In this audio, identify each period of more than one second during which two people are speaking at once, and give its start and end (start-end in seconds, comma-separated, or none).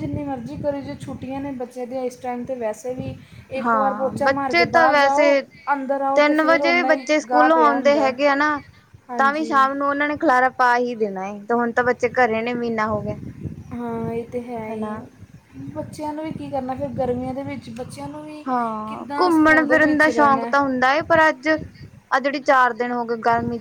3.6-5.3, 6.2-8.1, 18.9-20.5